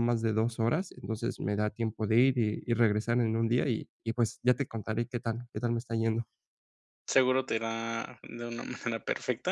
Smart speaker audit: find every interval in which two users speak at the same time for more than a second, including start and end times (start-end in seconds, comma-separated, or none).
none